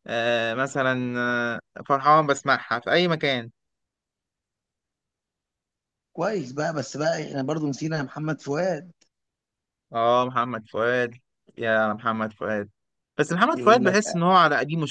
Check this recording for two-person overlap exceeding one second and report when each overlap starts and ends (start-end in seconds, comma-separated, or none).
none